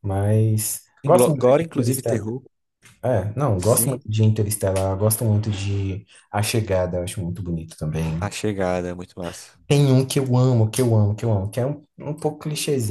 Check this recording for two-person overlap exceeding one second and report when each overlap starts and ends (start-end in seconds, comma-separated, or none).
1.0-2.3